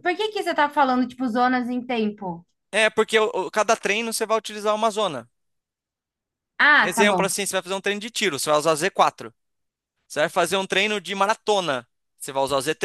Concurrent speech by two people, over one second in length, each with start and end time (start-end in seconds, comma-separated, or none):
none